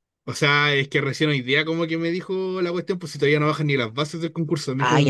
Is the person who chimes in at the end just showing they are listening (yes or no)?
no